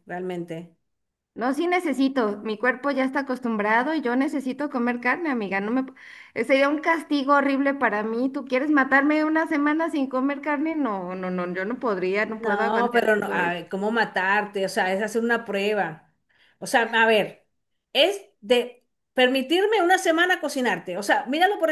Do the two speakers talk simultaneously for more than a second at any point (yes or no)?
yes